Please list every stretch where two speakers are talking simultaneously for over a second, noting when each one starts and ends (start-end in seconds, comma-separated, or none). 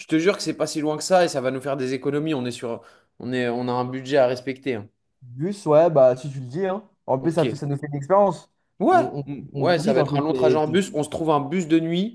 8.9-10.9